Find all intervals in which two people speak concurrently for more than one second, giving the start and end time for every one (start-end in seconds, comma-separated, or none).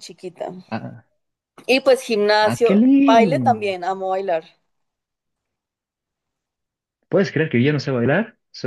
2.4-3.8